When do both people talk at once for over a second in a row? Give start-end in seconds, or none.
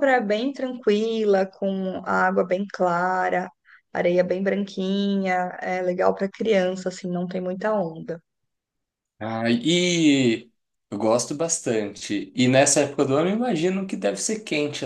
none